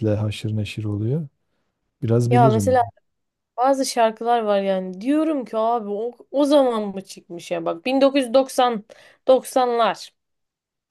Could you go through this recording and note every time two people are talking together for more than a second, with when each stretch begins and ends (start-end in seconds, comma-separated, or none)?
none